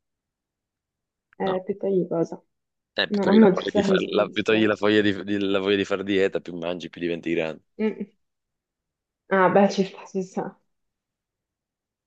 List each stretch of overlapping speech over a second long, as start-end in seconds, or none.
3.1-4.9